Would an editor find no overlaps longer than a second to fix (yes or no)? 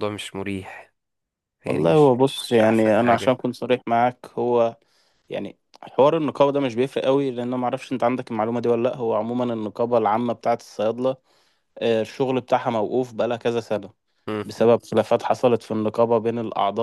no